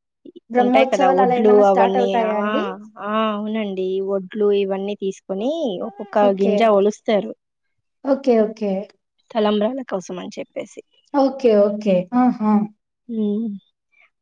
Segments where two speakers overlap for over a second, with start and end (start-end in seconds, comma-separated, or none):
0.6-2.5